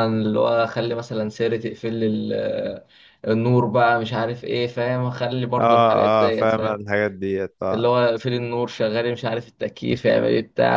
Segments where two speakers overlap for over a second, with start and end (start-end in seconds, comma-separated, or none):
5.6-6.8